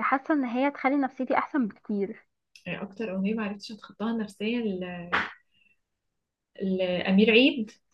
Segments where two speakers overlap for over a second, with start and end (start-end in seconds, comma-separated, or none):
none